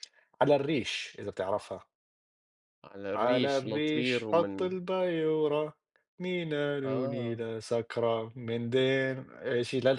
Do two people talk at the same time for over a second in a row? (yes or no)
yes